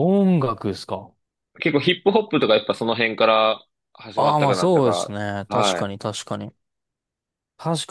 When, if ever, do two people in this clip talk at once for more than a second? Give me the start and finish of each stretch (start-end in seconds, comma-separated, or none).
4.2-5.9